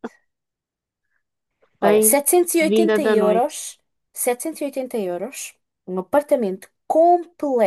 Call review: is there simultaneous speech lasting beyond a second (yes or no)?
yes